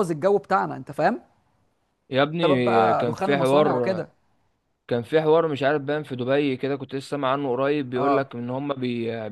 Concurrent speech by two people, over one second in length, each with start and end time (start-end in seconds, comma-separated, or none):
2.4-4.1